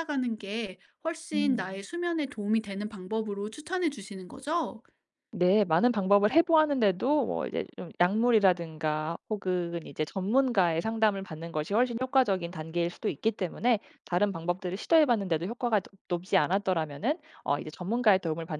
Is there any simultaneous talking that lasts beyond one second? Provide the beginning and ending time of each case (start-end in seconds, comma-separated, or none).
none